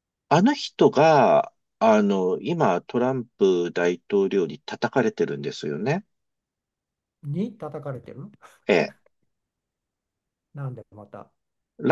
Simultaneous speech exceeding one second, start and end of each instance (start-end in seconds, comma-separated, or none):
none